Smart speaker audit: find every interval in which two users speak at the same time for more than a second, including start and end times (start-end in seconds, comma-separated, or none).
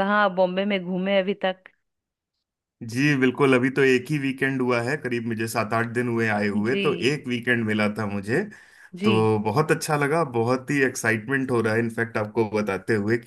none